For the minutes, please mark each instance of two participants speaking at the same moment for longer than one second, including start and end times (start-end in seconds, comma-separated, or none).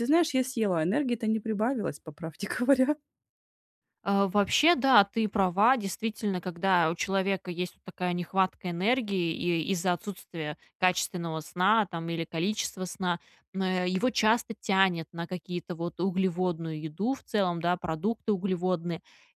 none